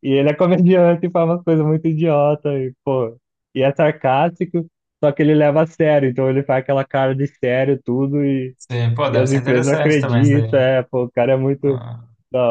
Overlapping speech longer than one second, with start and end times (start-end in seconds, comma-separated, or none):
9.1-10.6